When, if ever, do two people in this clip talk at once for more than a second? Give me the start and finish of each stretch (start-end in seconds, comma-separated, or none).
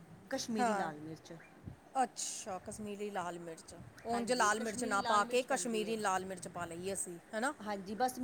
4.1-6.0